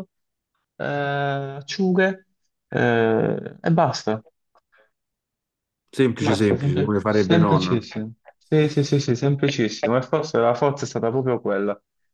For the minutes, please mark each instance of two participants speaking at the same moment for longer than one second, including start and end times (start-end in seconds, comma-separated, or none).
6.2-7.8